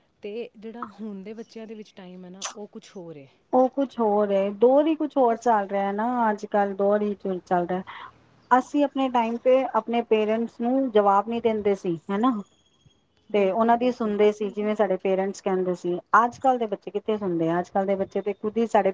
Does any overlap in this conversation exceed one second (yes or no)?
yes